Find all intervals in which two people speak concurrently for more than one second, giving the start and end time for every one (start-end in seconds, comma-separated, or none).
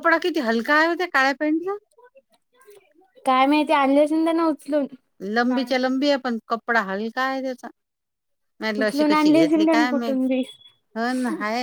8.8-10.2